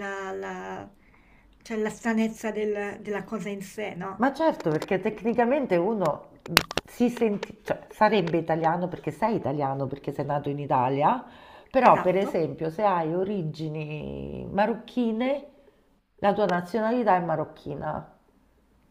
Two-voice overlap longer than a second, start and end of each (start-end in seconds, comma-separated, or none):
none